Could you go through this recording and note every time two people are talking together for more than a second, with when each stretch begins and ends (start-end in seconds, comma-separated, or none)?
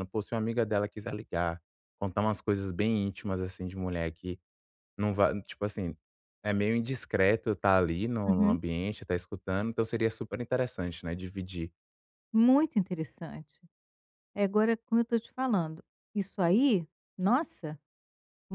none